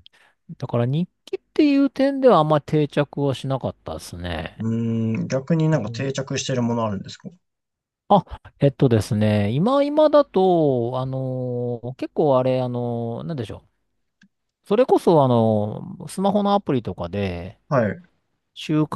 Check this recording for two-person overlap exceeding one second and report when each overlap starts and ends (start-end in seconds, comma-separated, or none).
none